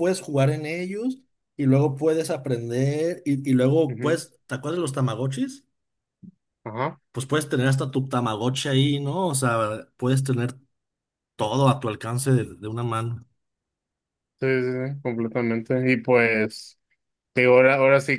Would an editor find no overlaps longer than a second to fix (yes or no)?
yes